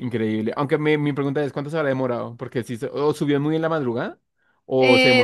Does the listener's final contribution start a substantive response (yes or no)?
yes